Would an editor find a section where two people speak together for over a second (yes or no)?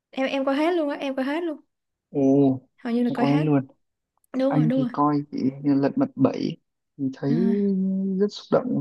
no